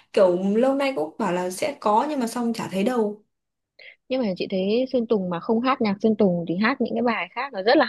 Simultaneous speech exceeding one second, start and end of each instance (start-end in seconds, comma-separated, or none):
none